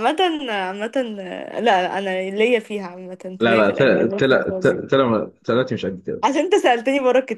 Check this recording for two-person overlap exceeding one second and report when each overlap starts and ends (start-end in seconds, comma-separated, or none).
3.4-4.8